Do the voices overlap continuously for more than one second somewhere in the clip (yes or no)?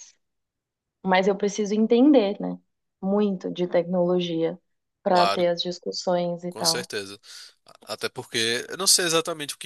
no